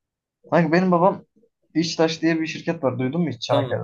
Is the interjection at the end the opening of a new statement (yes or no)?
yes